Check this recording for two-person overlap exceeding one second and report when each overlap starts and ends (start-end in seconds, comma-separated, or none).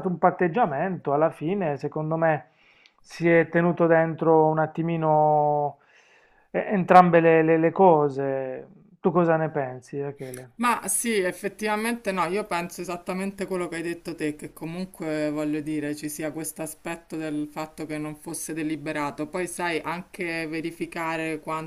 none